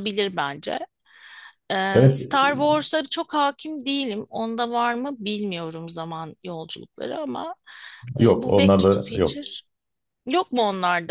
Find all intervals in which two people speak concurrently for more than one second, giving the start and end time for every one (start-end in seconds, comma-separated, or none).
8.2-9.4